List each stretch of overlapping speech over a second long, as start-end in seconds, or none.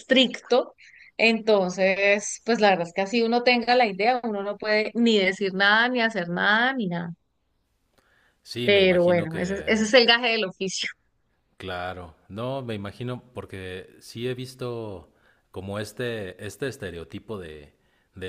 8.6-9.9